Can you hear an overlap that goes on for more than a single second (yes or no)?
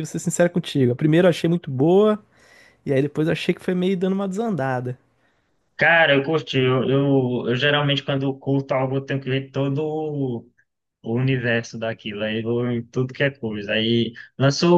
no